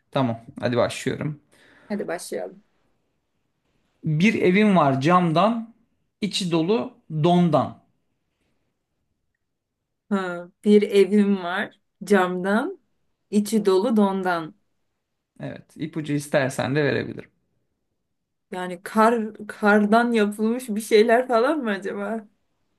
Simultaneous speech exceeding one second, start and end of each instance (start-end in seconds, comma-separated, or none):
none